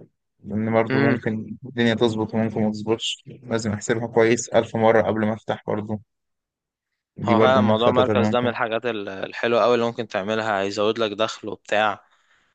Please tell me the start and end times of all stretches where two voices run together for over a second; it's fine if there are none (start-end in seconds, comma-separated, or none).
7.2-8.5